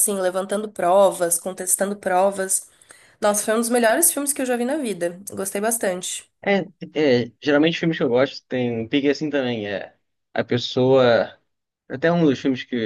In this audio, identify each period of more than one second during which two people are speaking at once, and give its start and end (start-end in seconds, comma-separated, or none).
none